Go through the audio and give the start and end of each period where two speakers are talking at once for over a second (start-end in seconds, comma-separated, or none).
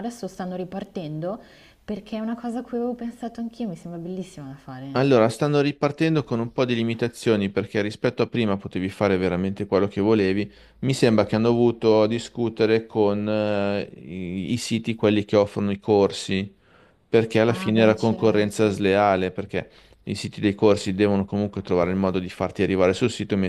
17.5-18.9